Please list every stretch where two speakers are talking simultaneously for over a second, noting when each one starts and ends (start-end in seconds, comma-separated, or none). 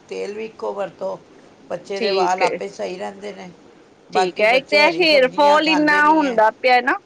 4.1-6.4